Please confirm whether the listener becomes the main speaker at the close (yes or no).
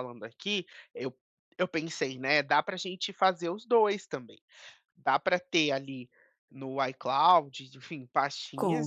no